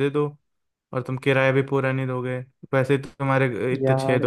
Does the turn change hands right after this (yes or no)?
yes